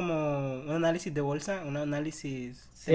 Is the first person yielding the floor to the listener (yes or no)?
yes